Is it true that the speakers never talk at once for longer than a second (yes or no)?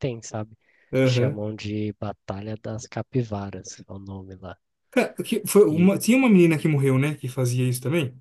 yes